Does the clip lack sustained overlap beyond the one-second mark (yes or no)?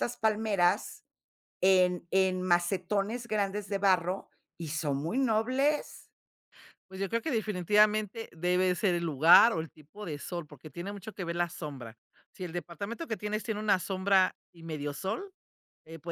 yes